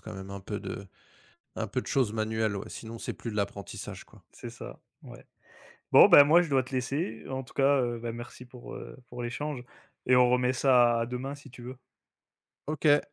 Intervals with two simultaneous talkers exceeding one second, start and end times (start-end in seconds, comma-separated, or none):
none